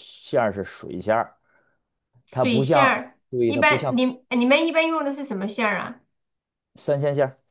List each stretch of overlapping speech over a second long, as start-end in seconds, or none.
2.3-3.9